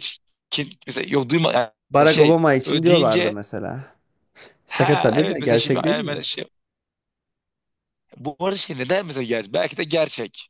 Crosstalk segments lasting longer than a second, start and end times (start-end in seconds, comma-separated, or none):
2.0-3.3, 4.7-6.2